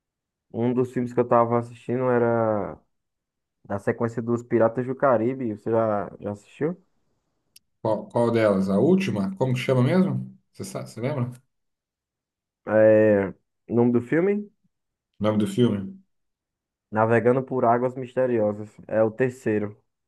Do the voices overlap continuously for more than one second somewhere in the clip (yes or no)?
no